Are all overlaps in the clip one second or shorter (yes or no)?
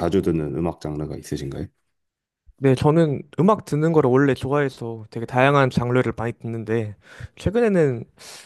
yes